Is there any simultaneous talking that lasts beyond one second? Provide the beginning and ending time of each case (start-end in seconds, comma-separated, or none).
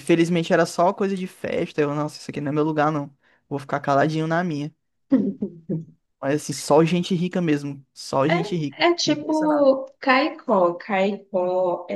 8.3-9.7